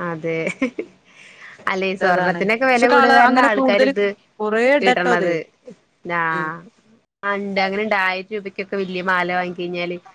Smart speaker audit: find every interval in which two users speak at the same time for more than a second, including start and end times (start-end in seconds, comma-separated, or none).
2.1-3.9